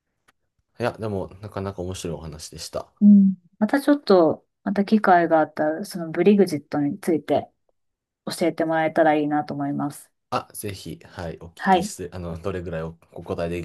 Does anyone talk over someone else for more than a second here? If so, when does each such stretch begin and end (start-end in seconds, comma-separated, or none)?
none